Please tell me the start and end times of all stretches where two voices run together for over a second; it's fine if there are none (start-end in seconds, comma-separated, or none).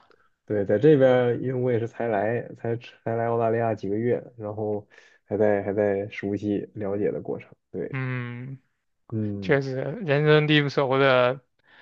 none